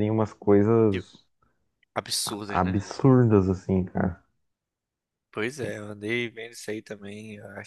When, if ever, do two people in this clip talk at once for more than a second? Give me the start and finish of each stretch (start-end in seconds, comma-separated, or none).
none